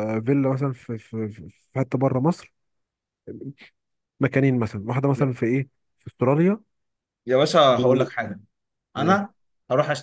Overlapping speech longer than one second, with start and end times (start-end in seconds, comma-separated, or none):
none